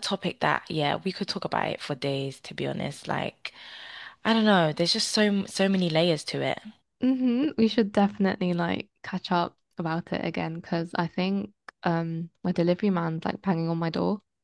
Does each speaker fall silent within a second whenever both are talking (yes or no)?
yes